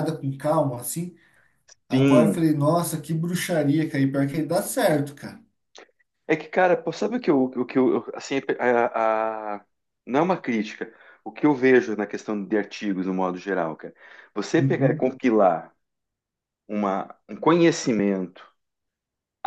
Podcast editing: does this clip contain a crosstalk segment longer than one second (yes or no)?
no